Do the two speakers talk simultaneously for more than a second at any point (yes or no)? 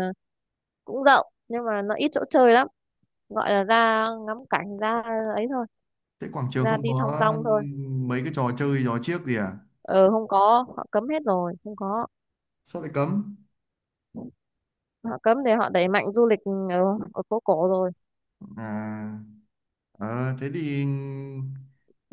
no